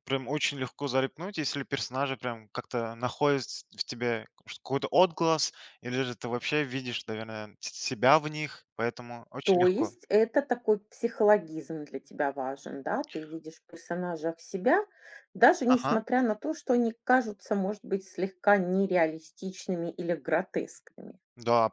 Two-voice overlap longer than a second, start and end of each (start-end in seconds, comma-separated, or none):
none